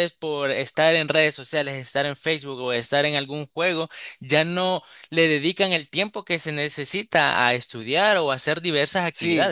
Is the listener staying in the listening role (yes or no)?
no